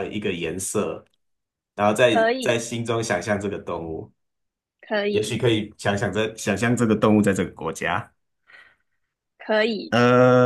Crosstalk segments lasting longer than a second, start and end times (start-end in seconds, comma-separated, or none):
none